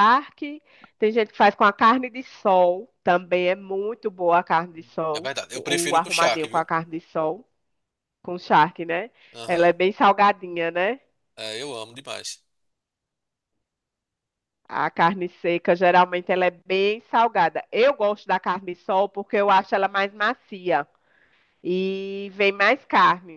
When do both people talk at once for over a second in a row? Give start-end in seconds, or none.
5.1-6.7